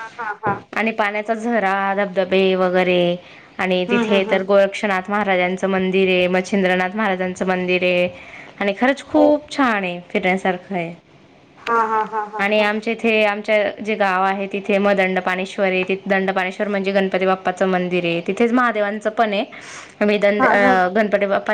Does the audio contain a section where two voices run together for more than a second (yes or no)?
no